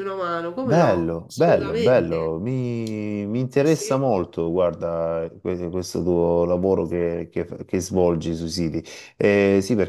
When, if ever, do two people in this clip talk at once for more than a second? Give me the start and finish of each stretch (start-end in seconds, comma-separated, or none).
0.6-2.3